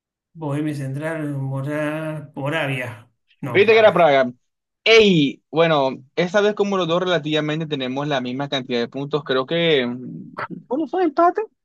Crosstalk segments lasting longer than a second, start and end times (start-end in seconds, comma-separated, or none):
none